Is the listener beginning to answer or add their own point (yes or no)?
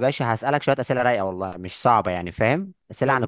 no